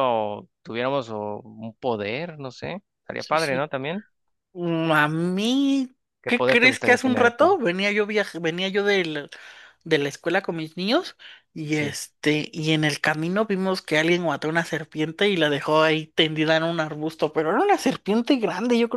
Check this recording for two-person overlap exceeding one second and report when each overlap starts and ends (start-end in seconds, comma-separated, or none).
6.2-7.5